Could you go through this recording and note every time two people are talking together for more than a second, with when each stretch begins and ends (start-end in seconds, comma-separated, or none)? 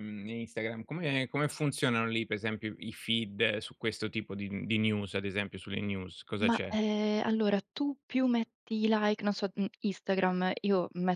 none